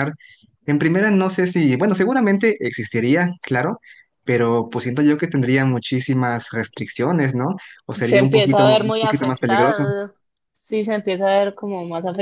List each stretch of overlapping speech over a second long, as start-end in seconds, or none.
8.0-9.9